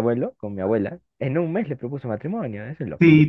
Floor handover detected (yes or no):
yes